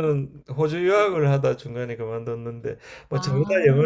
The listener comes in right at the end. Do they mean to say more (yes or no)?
no